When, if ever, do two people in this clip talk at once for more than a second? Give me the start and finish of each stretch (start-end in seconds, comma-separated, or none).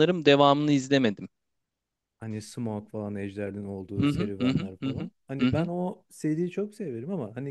4.0-5.7